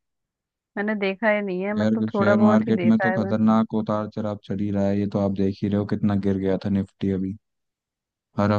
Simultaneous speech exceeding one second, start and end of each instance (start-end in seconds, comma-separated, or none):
1.8-3.4